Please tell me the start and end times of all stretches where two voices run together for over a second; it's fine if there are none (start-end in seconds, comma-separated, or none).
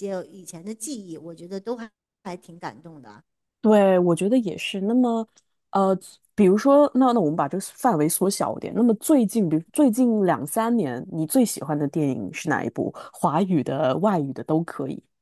none